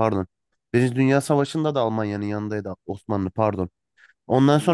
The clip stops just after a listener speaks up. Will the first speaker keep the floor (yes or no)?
yes